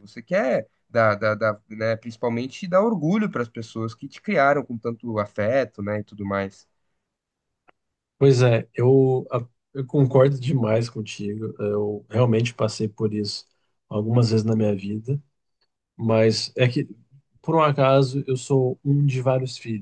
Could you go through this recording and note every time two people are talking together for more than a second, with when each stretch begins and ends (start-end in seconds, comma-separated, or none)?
none